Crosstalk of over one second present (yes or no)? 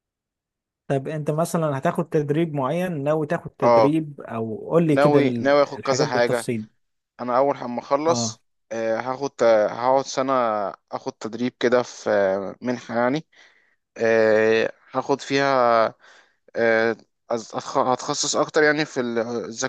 yes